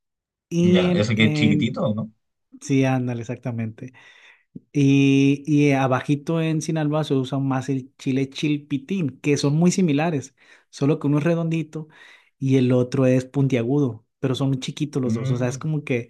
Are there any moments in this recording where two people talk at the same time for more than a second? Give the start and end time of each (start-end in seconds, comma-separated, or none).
0.6-1.9